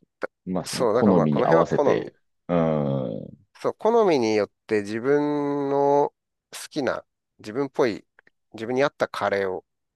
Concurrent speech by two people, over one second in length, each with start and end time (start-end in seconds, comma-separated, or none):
0.7-2.1